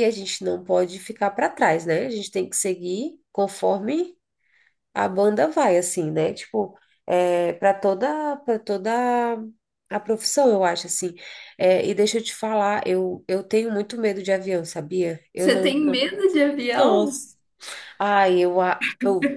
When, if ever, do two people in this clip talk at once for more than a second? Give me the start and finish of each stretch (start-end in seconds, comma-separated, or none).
none